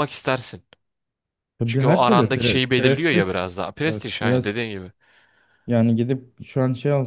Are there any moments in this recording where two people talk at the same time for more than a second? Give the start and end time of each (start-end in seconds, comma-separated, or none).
1.6-4.6